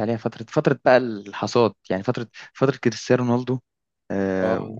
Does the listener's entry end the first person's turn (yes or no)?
no